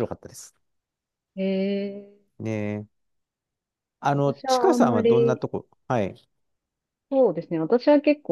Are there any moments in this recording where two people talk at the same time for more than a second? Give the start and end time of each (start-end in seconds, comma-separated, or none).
4.1-5.5